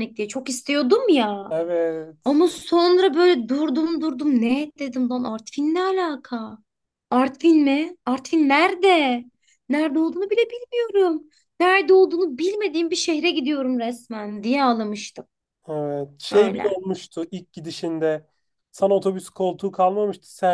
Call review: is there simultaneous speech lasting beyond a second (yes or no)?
no